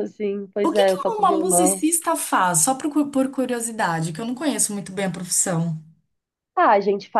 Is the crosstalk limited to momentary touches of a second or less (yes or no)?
no